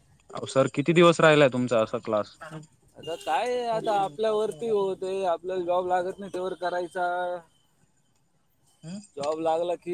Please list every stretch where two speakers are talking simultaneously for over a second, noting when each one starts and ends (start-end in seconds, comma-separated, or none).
none